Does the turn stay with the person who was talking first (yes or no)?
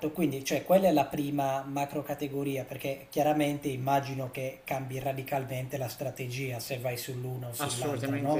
no